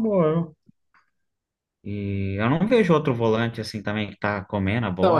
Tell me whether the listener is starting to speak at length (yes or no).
yes